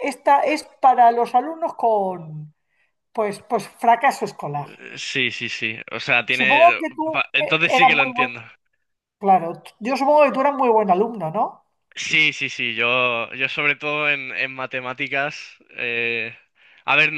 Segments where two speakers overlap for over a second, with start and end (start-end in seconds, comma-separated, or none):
6.4-8.3